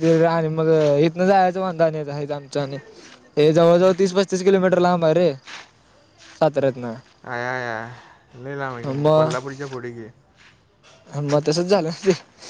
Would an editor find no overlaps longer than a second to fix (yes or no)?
yes